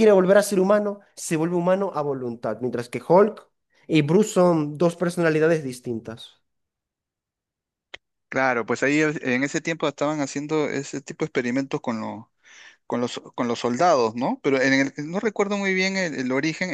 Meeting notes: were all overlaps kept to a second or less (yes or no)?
yes